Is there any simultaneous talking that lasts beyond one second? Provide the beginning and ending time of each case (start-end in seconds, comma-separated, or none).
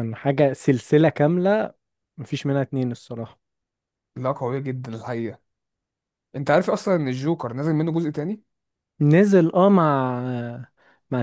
none